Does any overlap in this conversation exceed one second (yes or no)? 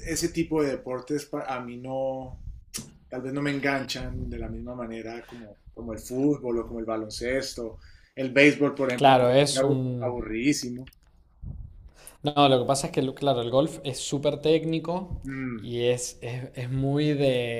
yes